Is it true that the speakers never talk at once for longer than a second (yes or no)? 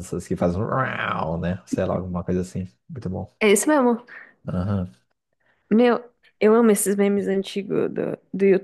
yes